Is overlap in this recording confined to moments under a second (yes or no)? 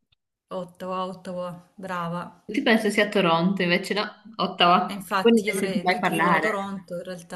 no